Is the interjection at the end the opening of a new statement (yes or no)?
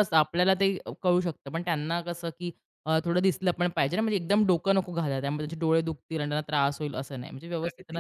yes